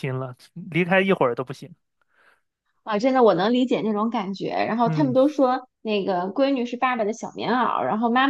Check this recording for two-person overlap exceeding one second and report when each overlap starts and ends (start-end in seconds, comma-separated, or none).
none